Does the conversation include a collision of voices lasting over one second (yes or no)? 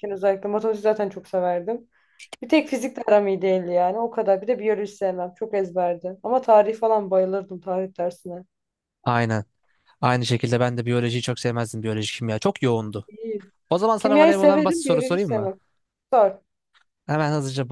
yes